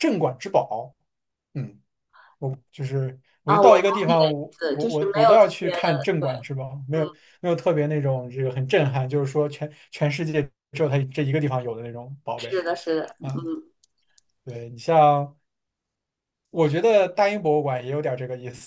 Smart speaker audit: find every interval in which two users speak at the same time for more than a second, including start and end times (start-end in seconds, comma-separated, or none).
3.5-6.3